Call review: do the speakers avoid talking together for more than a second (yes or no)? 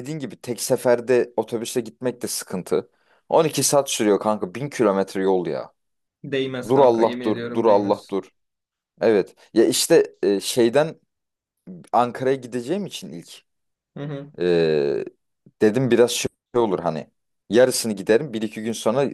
no